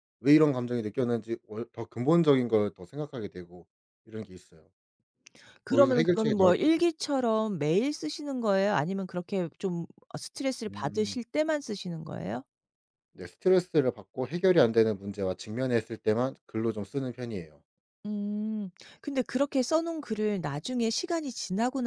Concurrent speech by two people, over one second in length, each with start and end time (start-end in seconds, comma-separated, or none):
5.7-6.9